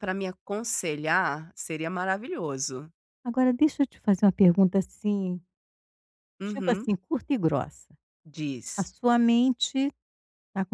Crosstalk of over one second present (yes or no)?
no